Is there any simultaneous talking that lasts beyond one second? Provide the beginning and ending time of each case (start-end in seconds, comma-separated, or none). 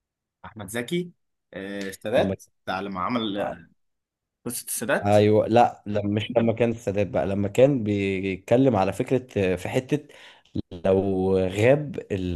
none